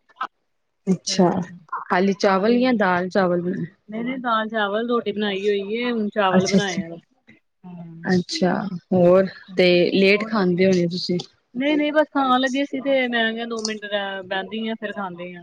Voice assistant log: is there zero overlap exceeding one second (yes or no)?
yes